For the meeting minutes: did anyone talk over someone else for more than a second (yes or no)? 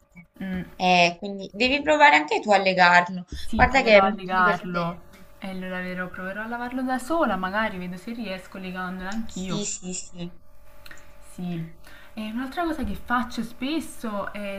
yes